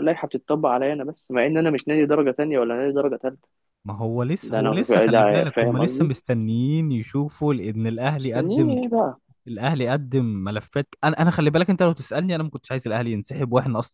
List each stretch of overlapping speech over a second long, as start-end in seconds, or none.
4.4-6.1